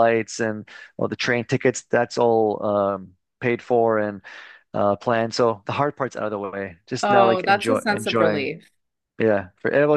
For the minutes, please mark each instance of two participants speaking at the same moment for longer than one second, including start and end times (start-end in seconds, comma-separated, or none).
7.0-8.5